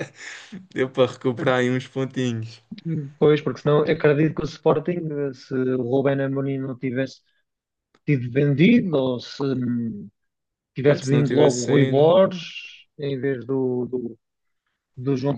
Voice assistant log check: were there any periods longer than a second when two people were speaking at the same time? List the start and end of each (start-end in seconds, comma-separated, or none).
10.8-12.1